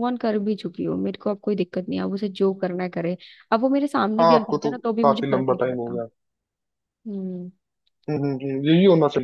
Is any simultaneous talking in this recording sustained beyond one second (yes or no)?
yes